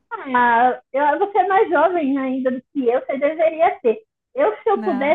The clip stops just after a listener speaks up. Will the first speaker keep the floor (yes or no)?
yes